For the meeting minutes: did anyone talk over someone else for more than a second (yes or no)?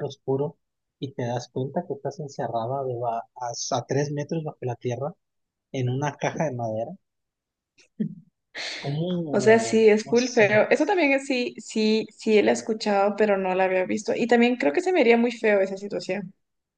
yes